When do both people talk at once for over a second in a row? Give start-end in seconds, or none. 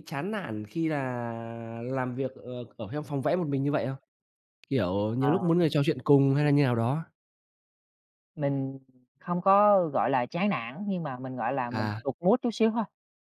none